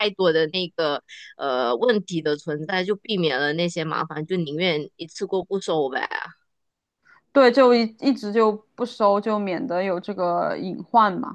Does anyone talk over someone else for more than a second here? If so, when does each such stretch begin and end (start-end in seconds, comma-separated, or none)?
none